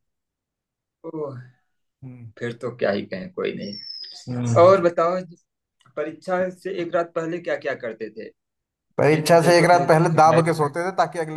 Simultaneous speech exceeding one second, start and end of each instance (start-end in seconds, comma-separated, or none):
9.1-10.5